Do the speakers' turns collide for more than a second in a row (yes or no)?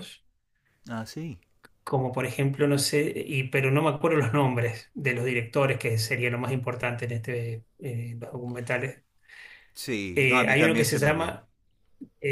yes